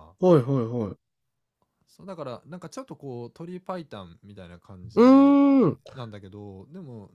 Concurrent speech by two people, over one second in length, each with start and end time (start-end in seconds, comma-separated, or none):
none